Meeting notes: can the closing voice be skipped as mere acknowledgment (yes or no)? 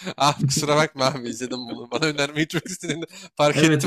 no